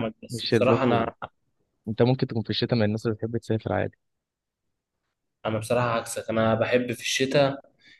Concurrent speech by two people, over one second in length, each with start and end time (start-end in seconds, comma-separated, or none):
none